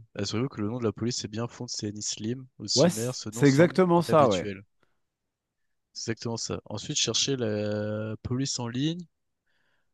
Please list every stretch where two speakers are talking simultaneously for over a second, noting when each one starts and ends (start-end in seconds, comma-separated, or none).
2.8-4.5